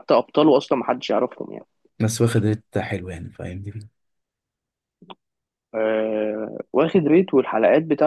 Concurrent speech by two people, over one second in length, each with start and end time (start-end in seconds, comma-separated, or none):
none